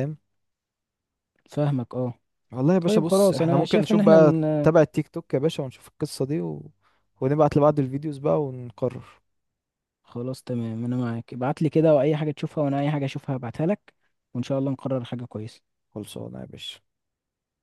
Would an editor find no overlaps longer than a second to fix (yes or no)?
no